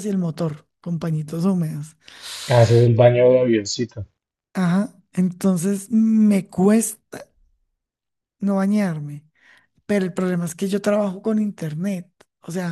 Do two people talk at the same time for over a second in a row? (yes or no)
no